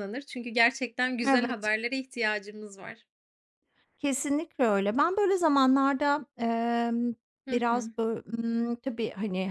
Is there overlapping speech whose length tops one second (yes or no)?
no